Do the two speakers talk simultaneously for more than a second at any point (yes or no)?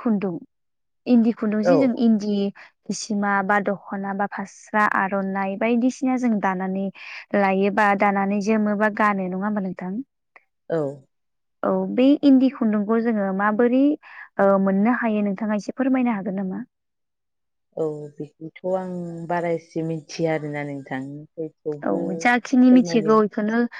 yes